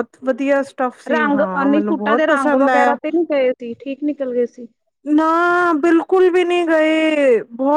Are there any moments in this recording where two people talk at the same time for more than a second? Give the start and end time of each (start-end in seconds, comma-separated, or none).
1.1-3.0